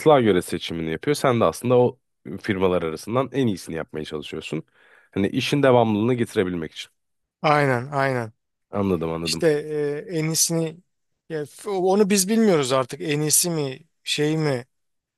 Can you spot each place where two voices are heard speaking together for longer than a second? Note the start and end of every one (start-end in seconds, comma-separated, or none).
none